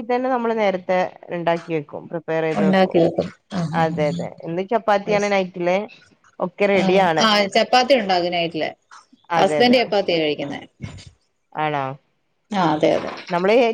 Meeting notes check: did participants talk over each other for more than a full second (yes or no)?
no